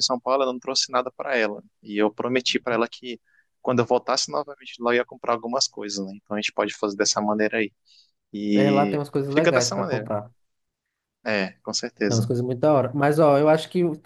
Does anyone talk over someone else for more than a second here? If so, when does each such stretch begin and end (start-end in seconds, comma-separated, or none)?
8.5-10.1